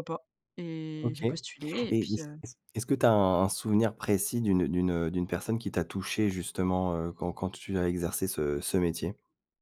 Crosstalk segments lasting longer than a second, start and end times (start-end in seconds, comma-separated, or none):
none